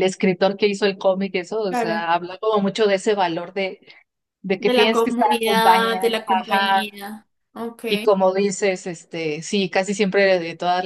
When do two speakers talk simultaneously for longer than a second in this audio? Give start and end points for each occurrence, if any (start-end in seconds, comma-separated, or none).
4.6-6.9